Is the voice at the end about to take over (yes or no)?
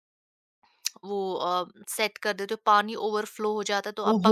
yes